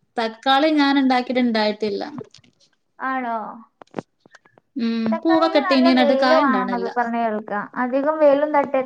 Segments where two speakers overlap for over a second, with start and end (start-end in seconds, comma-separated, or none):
5.1-6.9